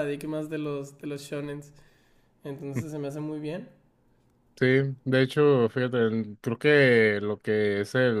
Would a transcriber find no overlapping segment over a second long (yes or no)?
yes